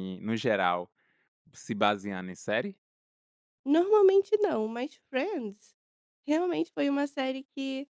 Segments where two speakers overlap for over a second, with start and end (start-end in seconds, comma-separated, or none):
none